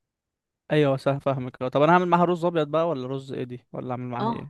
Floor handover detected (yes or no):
yes